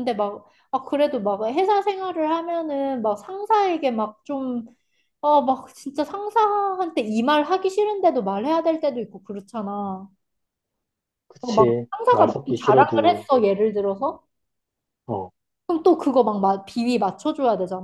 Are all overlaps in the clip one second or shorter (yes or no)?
no